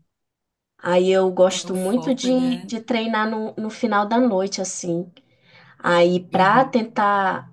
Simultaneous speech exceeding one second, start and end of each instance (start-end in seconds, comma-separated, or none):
1.5-2.7